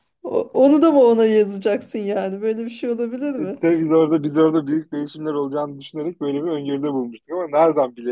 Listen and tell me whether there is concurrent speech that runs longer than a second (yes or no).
no